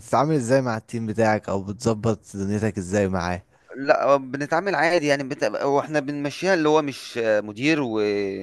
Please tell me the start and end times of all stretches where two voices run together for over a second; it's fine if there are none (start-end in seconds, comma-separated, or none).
none